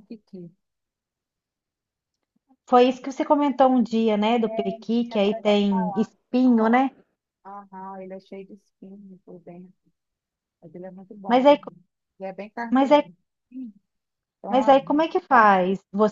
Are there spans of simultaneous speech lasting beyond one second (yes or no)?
yes